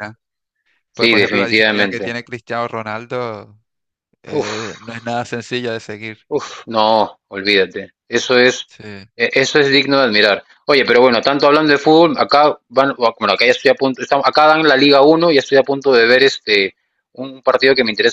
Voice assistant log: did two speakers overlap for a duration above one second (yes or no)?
yes